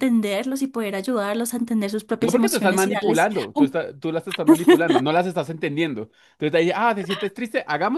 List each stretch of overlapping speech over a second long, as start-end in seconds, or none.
2.2-3.8